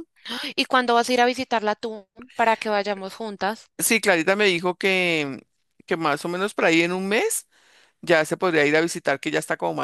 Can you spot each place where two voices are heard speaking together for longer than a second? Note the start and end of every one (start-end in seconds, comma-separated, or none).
none